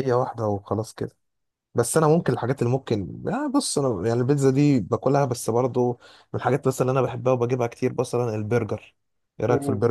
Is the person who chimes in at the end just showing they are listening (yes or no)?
no